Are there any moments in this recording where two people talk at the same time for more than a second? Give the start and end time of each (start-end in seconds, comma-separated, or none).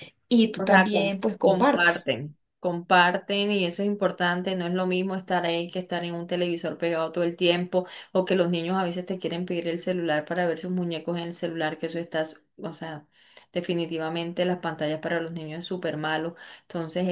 0.6-2.1